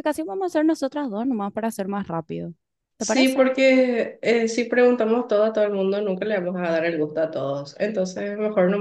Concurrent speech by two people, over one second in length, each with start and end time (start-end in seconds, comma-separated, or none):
none